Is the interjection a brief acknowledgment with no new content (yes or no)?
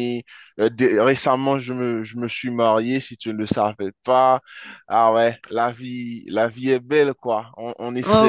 no